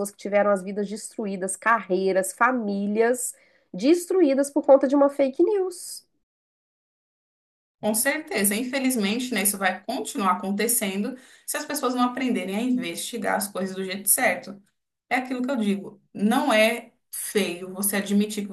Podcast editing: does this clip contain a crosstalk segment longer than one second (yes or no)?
no